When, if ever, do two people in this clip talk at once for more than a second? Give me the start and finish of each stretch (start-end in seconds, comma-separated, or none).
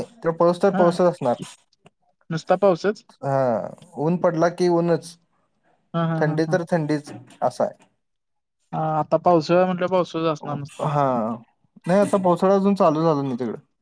none